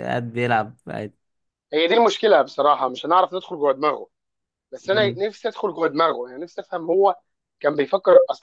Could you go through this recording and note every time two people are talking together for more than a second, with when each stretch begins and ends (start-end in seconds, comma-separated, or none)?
none